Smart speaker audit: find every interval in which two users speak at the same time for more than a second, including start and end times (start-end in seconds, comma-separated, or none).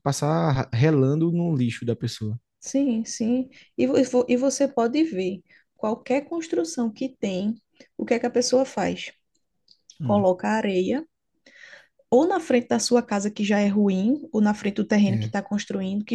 none